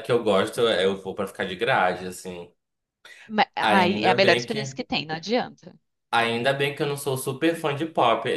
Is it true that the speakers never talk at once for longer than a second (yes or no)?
no